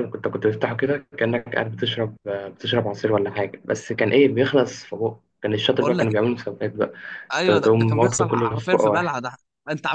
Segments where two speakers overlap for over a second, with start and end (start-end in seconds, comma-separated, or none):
7.4-9.2